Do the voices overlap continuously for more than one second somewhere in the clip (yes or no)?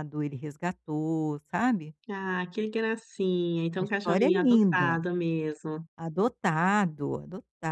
yes